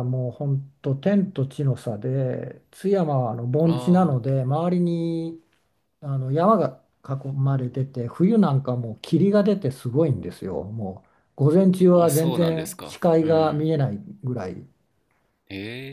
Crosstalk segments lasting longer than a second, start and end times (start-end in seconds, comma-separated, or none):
11.9-13.6